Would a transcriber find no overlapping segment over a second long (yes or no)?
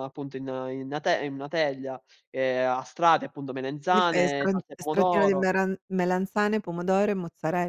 no